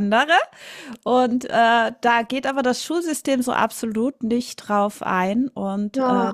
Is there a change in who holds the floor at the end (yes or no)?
yes